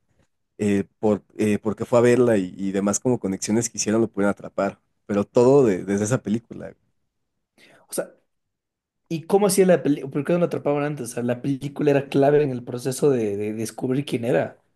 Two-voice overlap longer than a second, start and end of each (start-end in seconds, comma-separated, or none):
none